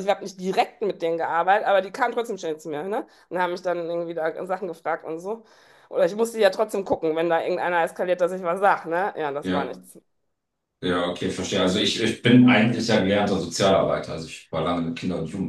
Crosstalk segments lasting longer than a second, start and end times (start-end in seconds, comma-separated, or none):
none